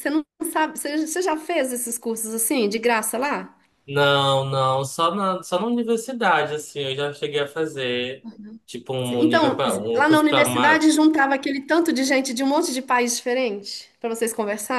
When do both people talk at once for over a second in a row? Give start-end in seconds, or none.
9.1-10.9